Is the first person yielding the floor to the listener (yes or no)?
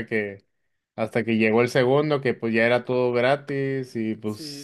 no